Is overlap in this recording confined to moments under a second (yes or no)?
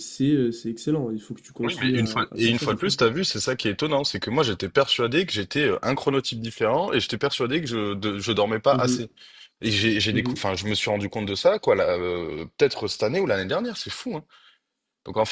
no